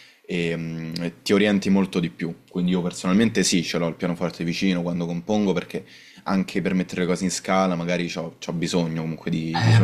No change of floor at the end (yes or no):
no